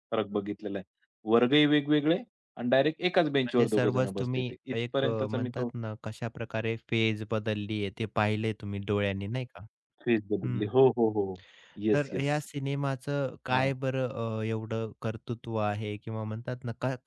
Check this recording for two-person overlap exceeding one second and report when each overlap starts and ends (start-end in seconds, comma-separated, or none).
3.5-5.7